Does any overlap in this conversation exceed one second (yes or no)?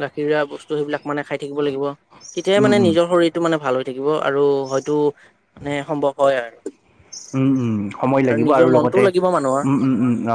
yes